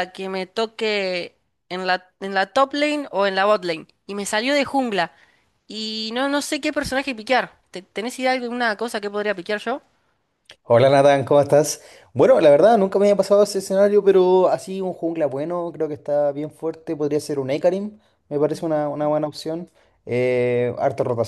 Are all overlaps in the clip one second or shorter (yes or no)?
yes